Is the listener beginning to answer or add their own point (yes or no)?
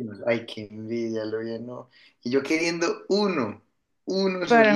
yes